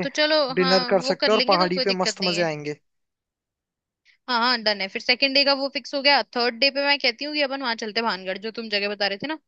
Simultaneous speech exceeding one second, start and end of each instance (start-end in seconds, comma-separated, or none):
0.6-2.5